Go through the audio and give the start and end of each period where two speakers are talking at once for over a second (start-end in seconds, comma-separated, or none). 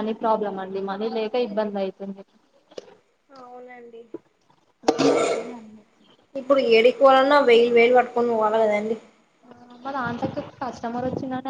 none